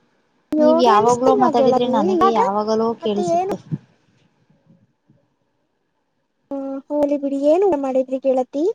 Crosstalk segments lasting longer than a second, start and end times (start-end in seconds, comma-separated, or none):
0.6-2.4